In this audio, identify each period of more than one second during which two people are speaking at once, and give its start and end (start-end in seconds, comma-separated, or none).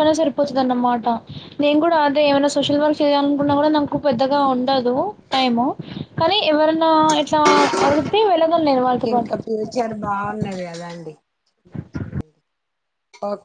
none